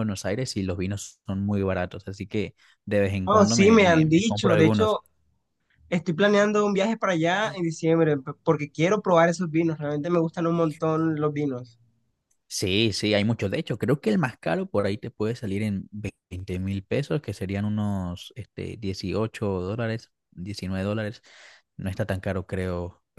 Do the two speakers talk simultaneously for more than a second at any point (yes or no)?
yes